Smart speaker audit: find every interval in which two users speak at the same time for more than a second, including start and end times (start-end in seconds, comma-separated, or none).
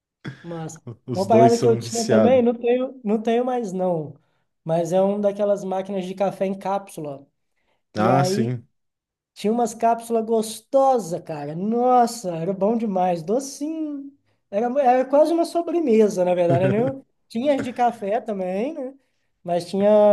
1.1-2.4